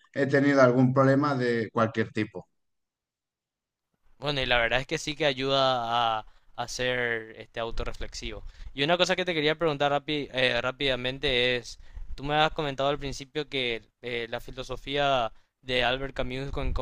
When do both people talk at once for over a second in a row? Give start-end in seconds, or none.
none